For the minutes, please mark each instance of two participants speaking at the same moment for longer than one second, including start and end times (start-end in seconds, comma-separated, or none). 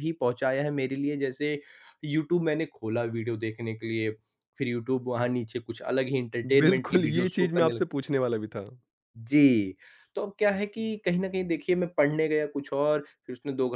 6.6-7.9